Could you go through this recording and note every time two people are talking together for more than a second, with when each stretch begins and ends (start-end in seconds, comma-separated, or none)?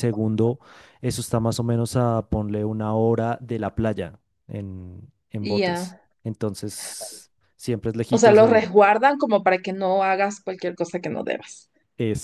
none